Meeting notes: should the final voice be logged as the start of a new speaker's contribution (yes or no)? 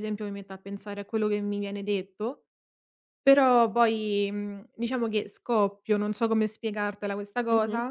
yes